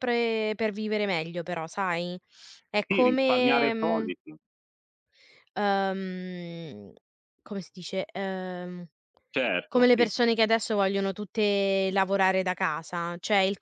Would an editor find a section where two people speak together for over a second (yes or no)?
yes